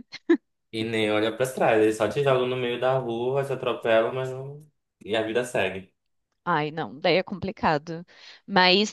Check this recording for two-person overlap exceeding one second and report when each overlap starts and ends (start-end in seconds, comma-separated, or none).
none